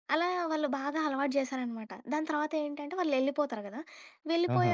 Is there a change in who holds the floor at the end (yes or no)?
no